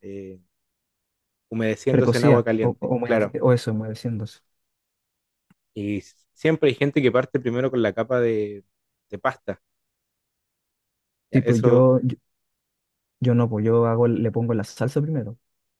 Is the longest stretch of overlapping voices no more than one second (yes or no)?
no